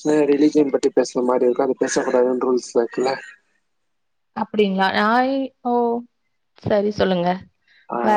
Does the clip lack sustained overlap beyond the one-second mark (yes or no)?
yes